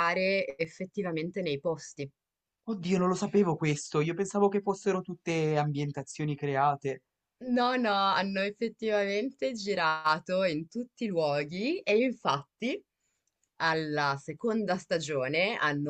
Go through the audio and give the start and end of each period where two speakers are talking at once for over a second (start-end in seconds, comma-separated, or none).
none